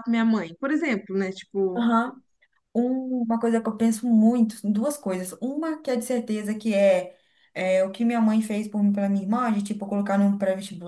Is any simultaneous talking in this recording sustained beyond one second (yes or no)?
no